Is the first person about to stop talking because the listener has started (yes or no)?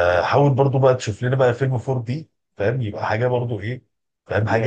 yes